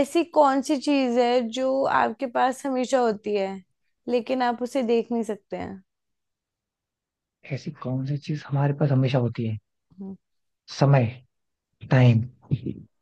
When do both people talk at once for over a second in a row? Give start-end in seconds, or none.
none